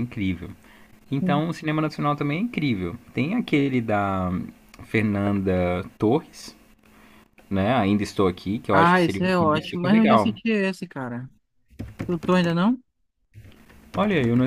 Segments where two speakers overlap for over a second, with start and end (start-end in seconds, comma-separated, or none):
8.7-10.3